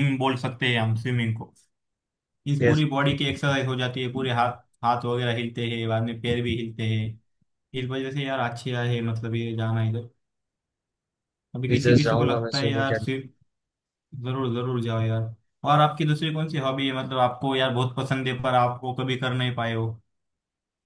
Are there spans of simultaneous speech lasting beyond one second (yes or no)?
yes